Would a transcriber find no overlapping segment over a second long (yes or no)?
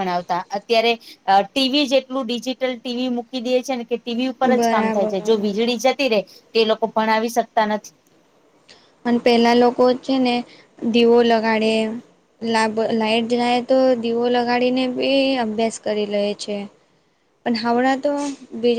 yes